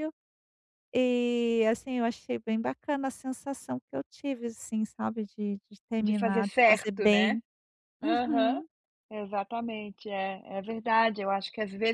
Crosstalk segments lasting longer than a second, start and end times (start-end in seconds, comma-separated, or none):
6.0-7.4